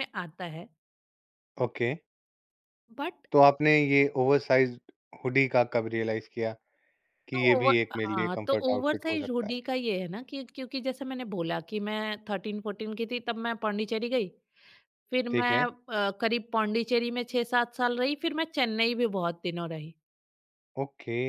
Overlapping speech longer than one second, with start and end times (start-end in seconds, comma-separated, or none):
7.3-9.5